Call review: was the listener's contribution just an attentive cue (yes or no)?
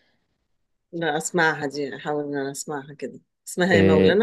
no